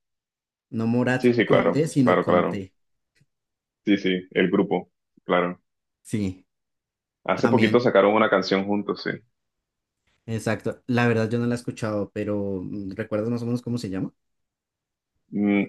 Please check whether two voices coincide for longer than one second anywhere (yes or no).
yes